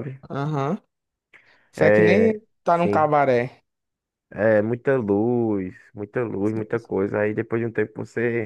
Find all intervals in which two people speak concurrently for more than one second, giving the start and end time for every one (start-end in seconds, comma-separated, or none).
1.8-3.1